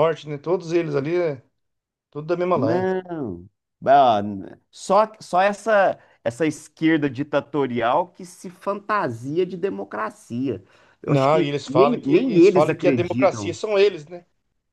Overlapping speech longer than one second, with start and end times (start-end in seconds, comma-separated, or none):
11.1-13.6